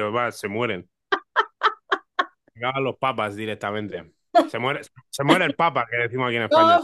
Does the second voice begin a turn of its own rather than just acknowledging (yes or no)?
yes